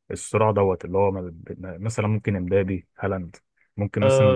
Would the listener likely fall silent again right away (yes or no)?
no